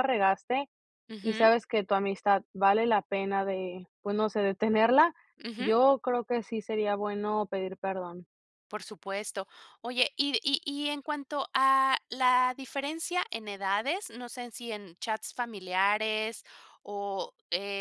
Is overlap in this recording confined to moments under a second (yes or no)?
yes